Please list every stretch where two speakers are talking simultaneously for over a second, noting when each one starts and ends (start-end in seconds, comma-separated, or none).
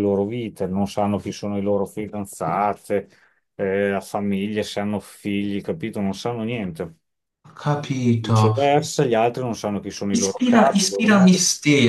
10.1-11.3